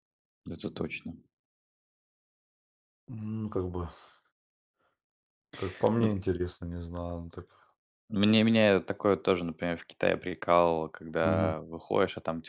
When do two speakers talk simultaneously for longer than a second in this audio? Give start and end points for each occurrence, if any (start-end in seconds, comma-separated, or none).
none